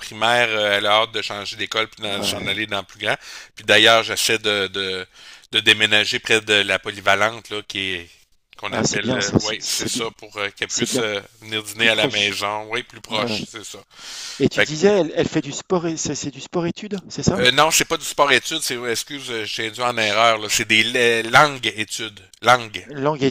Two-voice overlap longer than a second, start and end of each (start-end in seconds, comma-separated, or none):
8.7-10.0